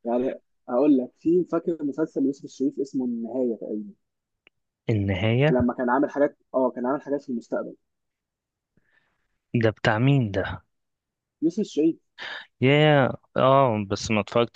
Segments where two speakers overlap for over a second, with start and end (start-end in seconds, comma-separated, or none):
none